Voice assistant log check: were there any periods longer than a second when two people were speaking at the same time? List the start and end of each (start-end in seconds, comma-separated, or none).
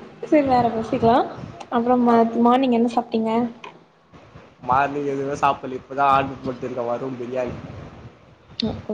none